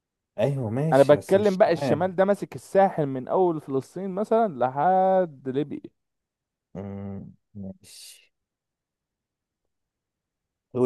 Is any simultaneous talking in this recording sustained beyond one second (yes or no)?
yes